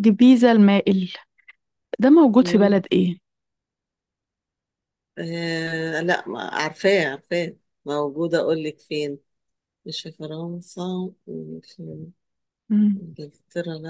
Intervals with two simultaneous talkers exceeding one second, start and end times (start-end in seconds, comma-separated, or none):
none